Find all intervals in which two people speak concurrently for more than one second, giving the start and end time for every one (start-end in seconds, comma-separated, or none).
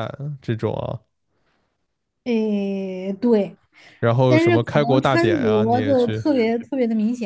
4.3-6.2